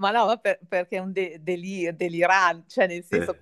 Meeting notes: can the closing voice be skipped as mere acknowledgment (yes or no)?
yes